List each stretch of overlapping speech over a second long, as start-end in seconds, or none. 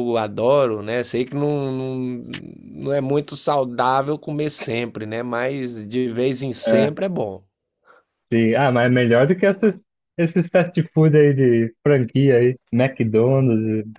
none